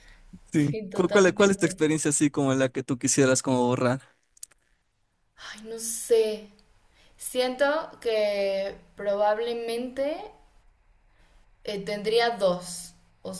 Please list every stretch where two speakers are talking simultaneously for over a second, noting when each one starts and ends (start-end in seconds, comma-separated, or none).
0.5-1.8